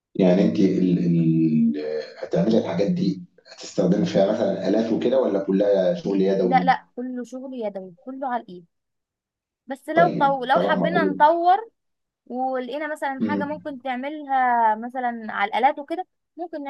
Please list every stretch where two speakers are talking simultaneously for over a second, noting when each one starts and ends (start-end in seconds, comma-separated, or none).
9.9-11.4